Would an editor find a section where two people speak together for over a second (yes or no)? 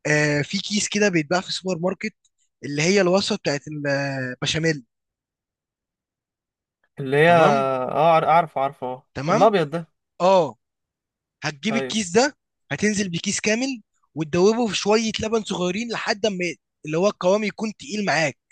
no